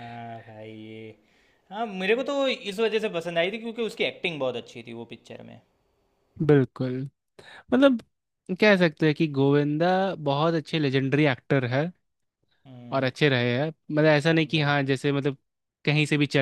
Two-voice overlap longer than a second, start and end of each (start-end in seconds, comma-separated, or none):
none